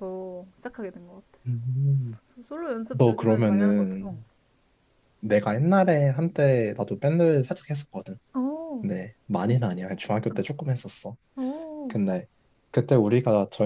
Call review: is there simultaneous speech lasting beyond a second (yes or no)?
yes